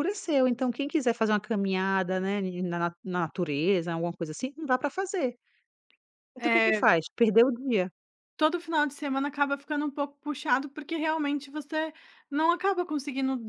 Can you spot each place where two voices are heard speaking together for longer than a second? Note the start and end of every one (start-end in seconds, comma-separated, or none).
none